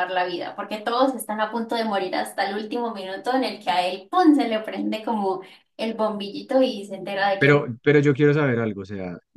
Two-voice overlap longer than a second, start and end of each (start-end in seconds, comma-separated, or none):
none